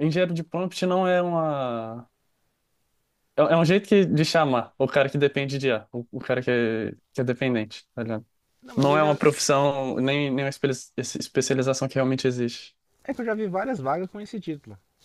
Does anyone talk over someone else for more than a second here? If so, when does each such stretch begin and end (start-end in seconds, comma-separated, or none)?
none